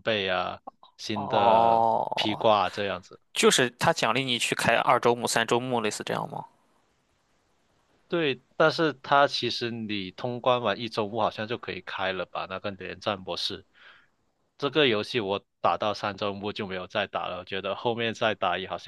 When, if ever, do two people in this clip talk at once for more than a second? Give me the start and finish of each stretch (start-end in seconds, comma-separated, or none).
1.1-2.4